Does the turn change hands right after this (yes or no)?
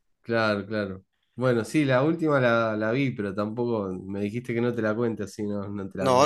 yes